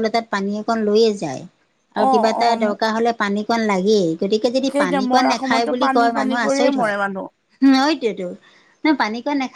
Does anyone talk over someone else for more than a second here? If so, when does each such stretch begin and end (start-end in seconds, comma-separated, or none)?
4.7-7.0